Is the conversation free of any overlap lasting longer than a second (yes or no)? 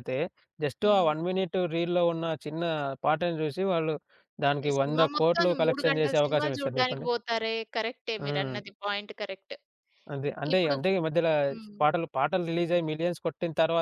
no